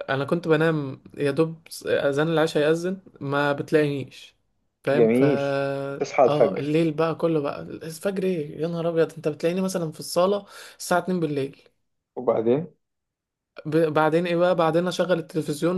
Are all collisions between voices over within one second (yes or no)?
yes